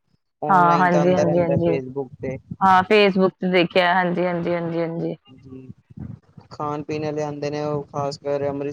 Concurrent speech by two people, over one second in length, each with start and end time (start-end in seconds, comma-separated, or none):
0.5-1.8